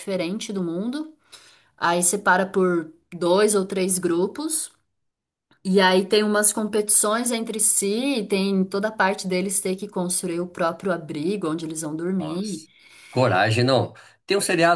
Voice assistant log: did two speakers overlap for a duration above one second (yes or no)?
no